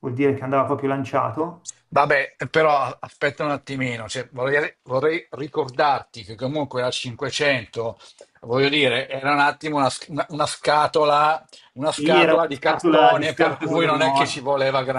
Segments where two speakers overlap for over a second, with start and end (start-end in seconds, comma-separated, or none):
11.9-14.5